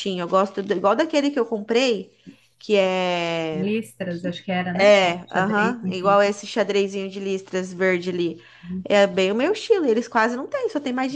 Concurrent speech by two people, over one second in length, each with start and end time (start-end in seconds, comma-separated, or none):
4.8-6.2